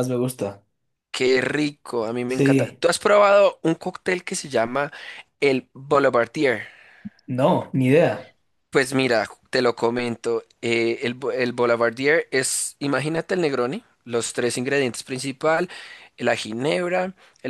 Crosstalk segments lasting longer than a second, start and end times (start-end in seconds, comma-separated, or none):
none